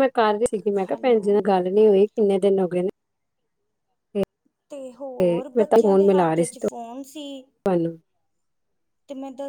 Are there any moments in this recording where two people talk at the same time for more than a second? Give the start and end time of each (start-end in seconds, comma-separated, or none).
none